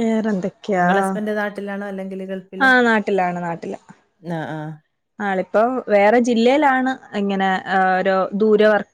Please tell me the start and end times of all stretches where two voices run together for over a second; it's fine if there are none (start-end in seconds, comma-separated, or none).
none